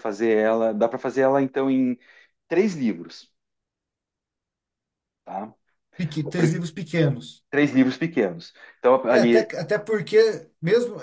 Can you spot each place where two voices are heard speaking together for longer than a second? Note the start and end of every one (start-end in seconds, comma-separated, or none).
none